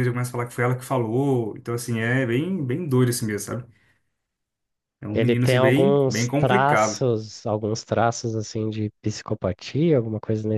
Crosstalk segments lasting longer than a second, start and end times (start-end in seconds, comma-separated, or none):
5.1-7.0